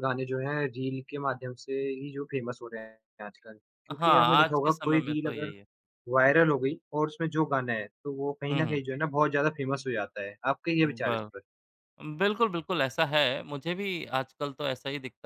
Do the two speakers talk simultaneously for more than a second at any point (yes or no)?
yes